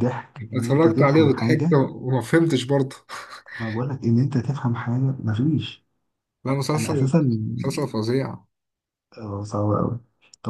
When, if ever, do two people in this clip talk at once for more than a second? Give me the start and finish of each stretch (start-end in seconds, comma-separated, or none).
0.5-1.8